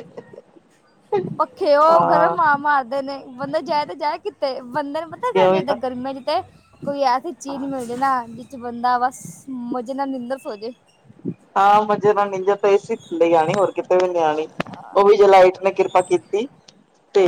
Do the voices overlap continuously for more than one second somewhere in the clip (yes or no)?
no